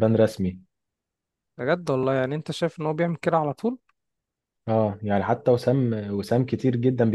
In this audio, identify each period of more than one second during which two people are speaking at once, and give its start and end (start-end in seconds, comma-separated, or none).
none